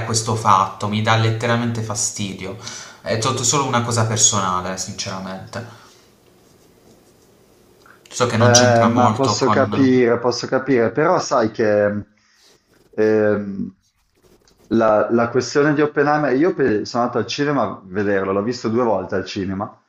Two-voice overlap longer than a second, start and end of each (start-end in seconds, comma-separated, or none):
8.4-10.0